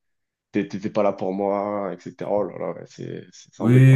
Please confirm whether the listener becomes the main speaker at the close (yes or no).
yes